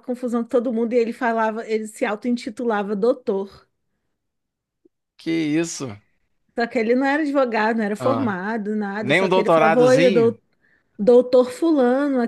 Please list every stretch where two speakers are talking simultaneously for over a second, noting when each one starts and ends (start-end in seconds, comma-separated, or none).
9.0-10.3